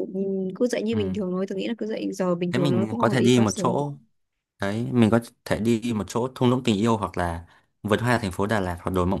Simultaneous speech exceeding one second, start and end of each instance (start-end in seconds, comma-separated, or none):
2.5-3.8